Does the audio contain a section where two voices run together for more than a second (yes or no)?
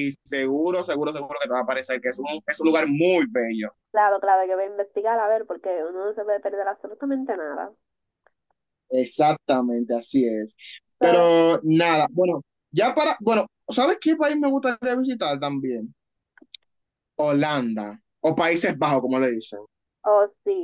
no